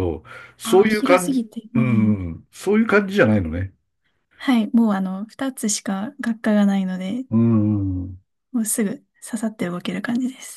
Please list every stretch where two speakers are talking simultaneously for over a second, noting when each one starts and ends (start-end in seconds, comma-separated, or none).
0.6-2.2